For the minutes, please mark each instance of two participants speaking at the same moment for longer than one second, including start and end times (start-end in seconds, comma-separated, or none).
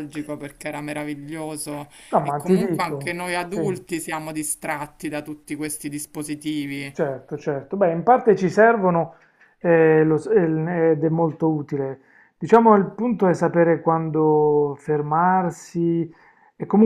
2.1-3.9